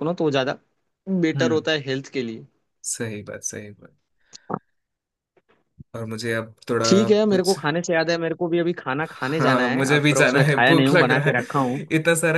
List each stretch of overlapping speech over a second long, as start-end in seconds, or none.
9.4-11.8